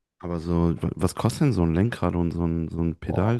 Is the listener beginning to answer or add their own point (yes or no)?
yes